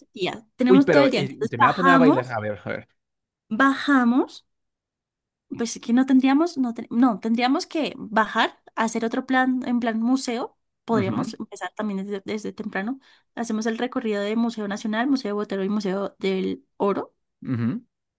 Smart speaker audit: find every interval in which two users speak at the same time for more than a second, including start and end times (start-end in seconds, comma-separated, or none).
0.7-2.4